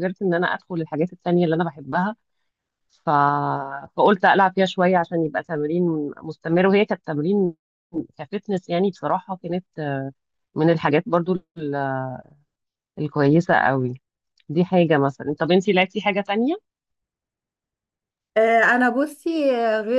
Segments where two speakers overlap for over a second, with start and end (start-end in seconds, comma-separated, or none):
none